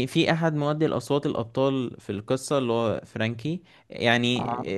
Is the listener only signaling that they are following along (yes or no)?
yes